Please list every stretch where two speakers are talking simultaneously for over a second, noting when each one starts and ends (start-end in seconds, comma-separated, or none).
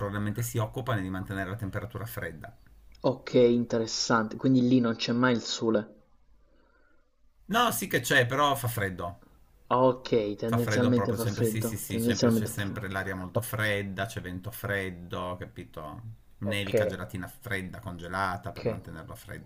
10.5-12.9